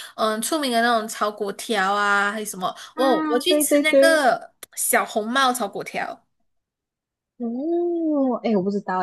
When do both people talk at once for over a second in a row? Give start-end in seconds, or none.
2.9-4.2